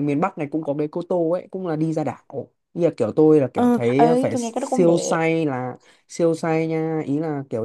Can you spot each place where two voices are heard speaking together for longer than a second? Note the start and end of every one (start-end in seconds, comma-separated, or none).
3.5-5.2